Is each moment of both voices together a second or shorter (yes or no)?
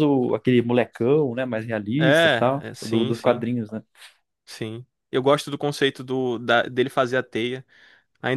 no